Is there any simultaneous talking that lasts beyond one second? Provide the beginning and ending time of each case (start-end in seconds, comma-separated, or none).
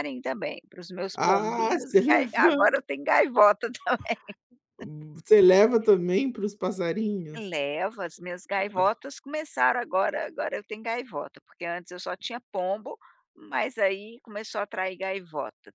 1.1-2.5